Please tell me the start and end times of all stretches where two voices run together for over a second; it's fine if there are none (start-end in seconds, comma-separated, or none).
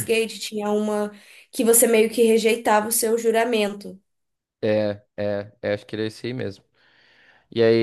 none